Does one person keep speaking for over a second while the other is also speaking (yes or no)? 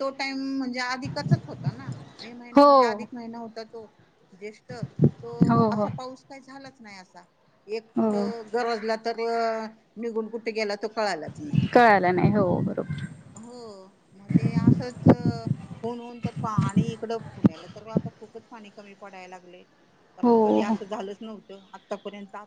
no